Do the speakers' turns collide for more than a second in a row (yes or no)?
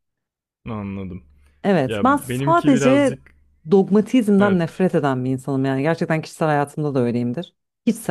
yes